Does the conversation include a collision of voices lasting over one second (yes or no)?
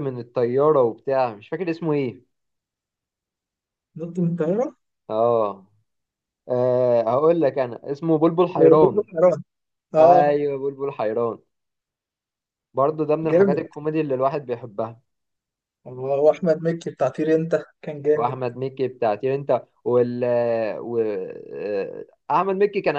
no